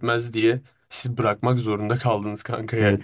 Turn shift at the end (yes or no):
yes